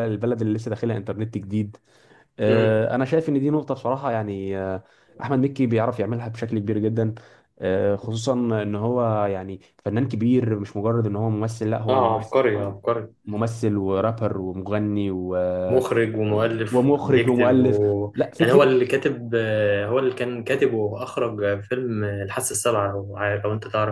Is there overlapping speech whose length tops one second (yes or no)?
yes